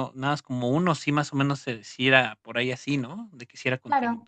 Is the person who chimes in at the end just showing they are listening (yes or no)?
no